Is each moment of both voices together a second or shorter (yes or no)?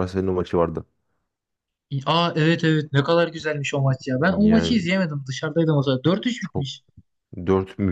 yes